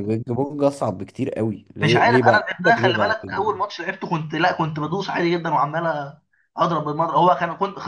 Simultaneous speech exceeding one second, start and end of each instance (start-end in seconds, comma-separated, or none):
1.8-3.6